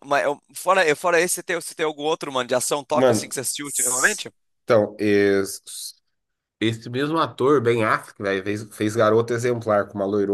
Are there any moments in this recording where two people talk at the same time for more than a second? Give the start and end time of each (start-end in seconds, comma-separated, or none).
2.9-4.2